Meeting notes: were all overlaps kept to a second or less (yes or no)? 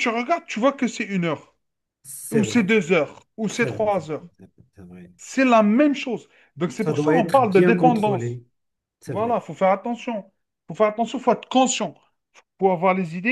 no